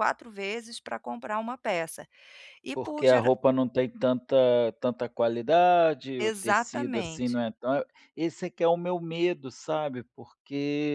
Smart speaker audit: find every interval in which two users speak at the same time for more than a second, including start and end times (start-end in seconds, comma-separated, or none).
6.2-7.4